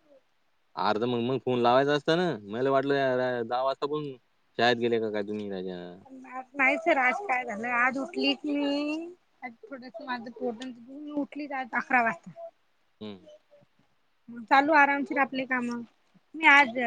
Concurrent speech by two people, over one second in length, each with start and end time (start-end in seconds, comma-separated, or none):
none